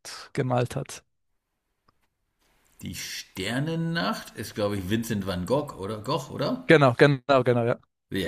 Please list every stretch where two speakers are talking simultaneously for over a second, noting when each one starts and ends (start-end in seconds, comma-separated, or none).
none